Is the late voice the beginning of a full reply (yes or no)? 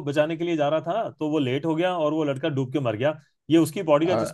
no